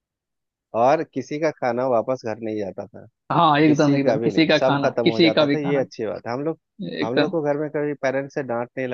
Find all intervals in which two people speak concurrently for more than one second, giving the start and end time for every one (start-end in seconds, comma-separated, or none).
3.6-5.8